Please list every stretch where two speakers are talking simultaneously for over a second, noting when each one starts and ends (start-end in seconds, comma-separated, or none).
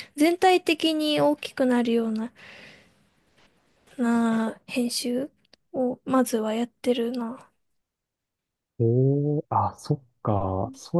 none